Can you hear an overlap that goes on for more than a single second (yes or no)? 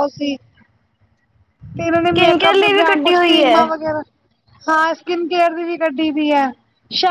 yes